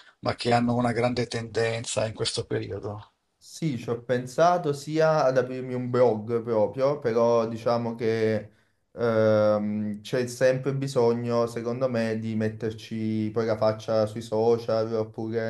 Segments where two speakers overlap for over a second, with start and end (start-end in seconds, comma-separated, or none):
none